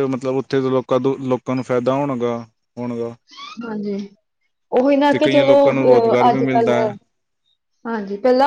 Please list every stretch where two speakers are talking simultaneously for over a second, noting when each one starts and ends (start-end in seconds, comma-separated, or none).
5.2-6.7